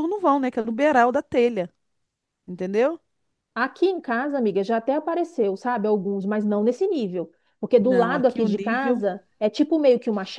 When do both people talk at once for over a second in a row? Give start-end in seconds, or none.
7.7-9.0